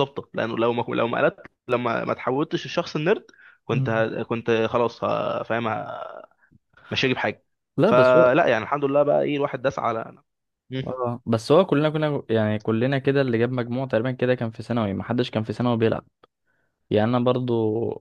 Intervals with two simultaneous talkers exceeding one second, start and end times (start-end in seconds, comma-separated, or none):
none